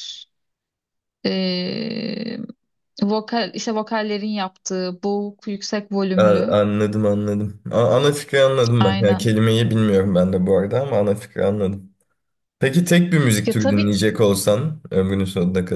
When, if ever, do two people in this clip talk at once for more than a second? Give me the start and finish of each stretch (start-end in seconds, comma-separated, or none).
none